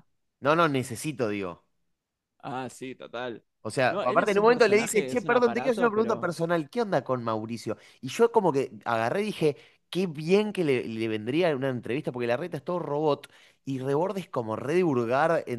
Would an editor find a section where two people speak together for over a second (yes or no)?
yes